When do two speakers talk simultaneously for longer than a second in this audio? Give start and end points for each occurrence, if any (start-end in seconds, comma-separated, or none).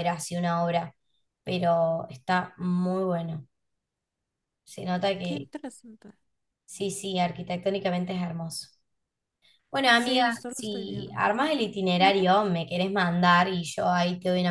9.9-11.3